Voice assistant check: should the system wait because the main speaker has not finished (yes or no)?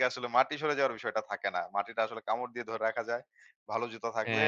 yes